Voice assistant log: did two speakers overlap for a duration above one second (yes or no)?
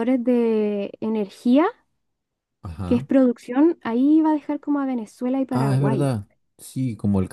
no